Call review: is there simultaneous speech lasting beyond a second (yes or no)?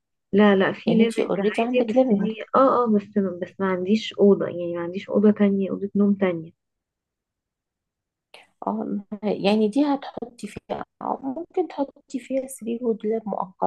yes